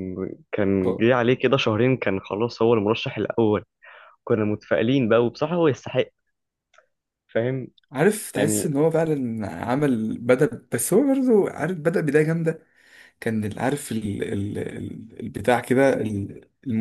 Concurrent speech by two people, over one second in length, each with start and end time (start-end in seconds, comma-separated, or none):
none